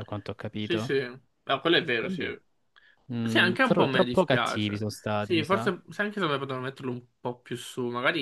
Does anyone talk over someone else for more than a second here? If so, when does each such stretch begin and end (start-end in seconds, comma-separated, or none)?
3.2-5.7